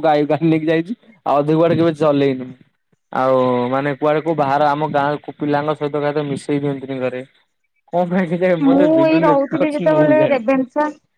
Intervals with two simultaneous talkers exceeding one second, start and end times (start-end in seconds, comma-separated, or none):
8.7-10.5